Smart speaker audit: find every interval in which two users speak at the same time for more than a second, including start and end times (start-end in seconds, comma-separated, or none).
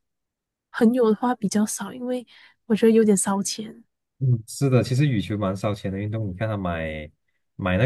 none